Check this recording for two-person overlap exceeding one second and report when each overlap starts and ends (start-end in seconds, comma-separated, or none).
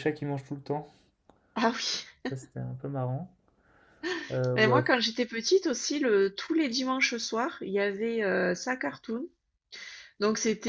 none